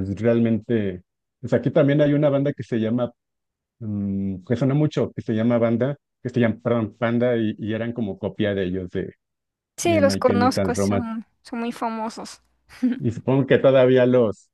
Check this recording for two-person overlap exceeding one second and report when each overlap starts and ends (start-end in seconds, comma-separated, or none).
9.8-11.1